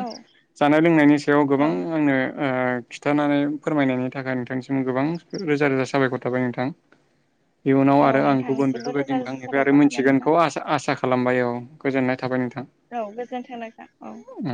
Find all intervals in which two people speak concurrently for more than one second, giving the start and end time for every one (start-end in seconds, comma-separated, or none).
8.1-10.3